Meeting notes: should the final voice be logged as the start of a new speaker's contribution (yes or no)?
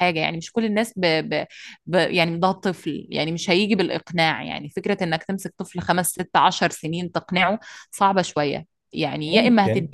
no